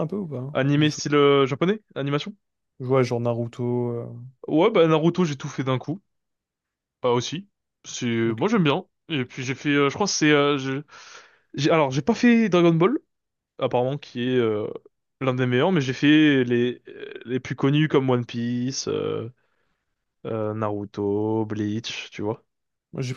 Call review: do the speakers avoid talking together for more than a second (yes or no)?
yes